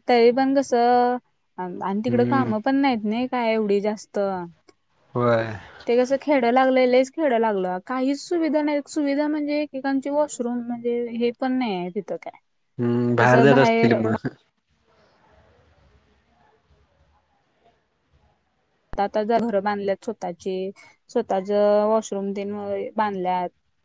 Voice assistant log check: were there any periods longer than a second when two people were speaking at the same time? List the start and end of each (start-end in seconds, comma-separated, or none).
none